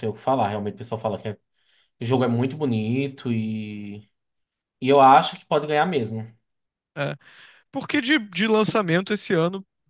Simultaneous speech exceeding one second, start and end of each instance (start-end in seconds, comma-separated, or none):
none